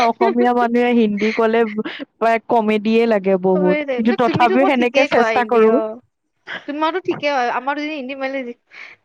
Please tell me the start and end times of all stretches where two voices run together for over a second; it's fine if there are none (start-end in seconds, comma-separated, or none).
3.5-5.7